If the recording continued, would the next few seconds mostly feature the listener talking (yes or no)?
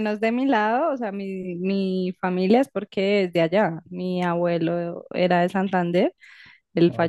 no